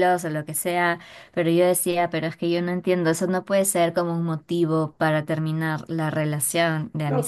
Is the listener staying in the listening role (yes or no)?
no